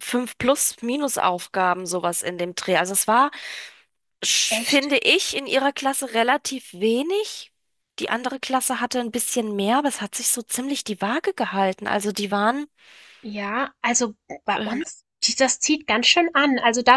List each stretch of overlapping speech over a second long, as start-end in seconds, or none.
none